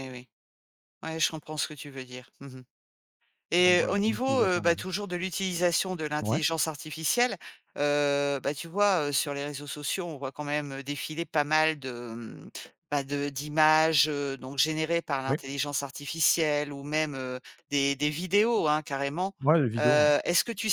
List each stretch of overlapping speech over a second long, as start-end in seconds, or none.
3.6-4.8